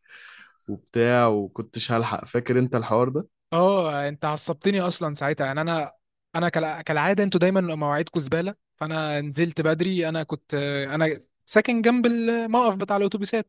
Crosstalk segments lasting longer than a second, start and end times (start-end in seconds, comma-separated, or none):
none